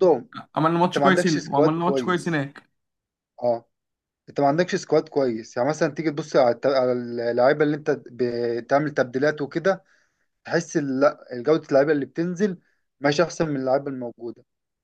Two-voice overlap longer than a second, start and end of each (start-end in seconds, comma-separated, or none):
0.8-2.4